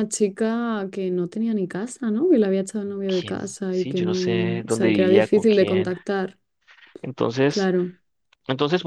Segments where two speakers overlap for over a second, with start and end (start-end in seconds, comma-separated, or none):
3.0-5.9